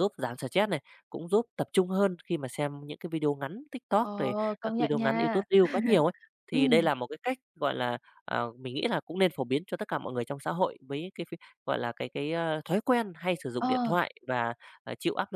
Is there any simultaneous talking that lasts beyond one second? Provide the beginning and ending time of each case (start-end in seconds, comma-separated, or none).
4.0-5.4